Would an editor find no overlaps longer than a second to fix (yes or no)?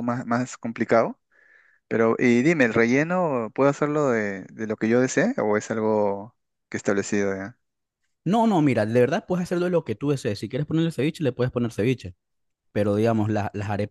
yes